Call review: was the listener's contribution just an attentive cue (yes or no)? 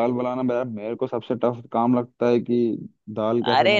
no